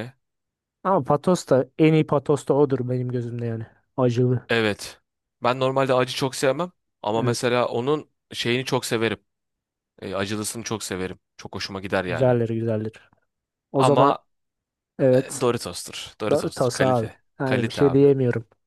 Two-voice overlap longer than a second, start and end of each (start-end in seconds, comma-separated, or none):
16.3-18.0